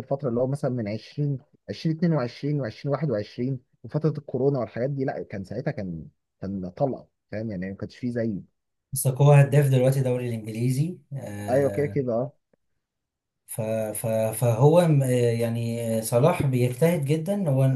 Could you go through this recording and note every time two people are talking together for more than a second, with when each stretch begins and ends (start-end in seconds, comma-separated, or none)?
none